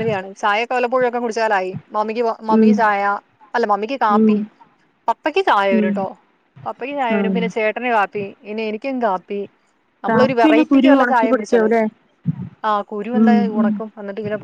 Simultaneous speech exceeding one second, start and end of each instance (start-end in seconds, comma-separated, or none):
10.1-11.7